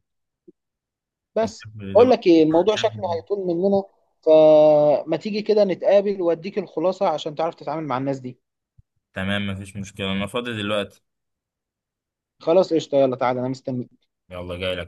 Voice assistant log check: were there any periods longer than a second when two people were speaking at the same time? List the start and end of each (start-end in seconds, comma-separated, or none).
none